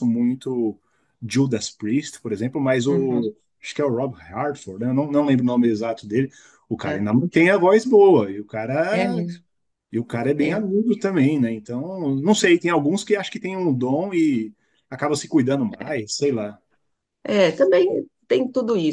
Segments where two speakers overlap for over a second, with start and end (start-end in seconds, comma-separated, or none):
none